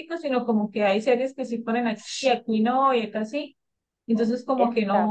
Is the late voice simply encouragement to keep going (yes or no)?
yes